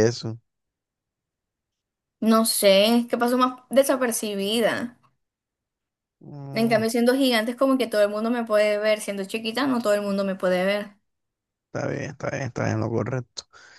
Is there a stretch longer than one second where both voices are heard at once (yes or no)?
no